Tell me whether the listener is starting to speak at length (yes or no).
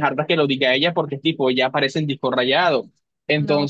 no